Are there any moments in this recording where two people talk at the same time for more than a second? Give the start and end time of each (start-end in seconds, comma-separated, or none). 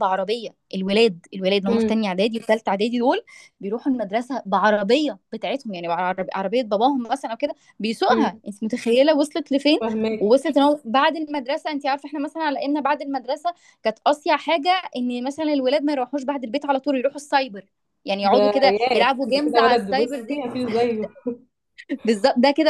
18.2-20.4